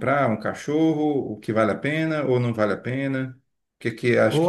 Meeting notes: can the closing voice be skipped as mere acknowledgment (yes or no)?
no